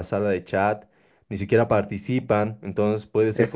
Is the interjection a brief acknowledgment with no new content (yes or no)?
yes